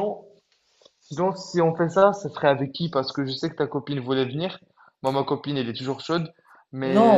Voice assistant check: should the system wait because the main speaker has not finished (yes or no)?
no